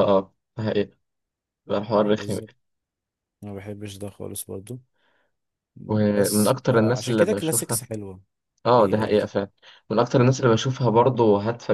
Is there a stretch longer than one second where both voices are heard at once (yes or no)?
yes